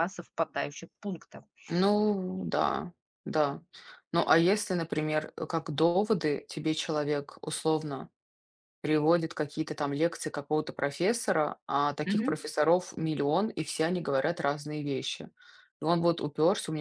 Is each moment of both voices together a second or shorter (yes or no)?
yes